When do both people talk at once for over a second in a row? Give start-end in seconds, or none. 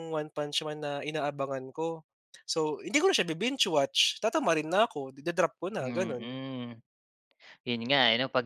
none